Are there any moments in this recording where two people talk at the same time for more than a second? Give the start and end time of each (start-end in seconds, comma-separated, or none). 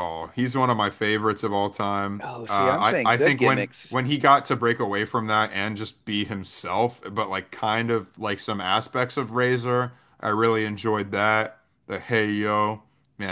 2.2-4.0